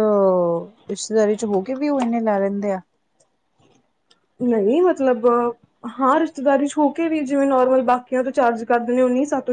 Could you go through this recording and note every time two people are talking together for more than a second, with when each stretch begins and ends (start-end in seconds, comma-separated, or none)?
none